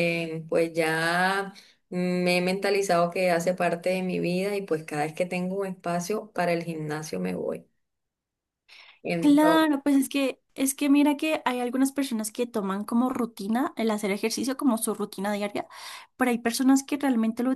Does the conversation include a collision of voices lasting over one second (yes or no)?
no